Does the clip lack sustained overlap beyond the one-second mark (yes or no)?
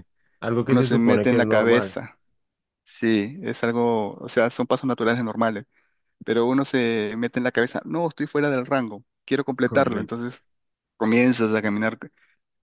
no